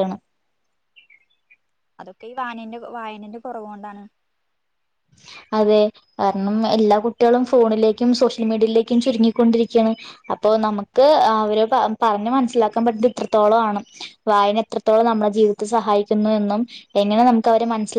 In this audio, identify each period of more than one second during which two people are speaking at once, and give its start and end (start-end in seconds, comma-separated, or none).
none